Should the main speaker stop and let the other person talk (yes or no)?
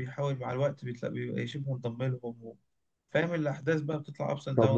yes